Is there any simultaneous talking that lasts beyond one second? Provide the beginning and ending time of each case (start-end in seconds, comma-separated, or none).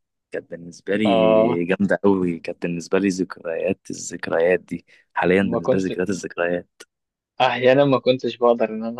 none